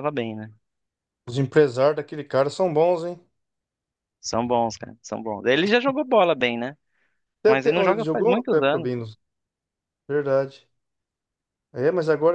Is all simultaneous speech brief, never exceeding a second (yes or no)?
no